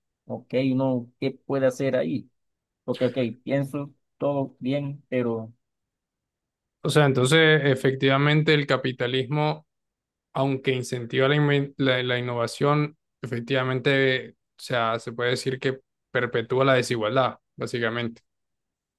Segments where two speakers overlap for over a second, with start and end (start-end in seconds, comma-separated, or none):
none